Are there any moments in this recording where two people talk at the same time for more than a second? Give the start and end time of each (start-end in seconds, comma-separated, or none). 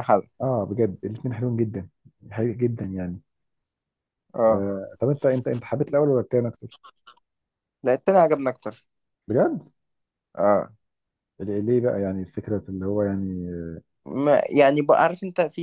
none